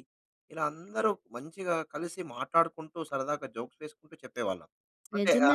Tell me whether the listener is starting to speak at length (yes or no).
yes